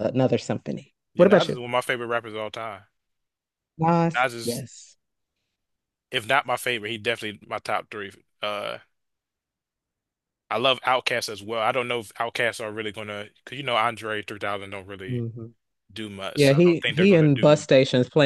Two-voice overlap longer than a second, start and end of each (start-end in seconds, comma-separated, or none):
16.4-17.6